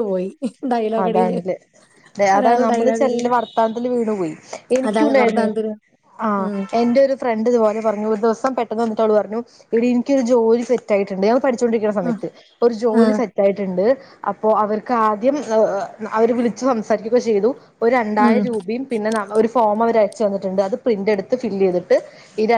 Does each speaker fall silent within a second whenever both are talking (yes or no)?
yes